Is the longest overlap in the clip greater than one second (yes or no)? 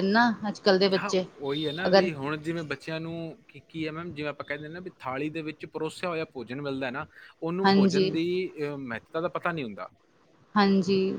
no